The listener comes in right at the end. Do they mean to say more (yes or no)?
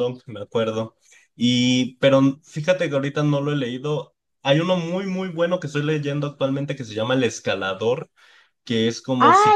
yes